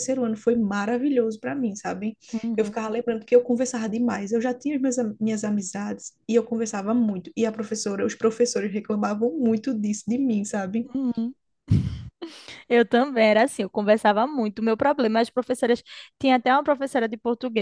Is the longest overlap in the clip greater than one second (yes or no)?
no